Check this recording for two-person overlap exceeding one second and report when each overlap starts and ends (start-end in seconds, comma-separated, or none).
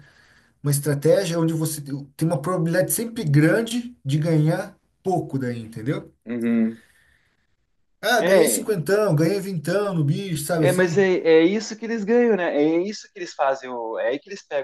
none